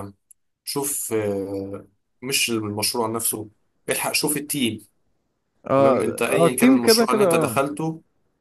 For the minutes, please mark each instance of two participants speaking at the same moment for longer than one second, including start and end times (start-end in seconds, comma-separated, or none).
5.8-7.6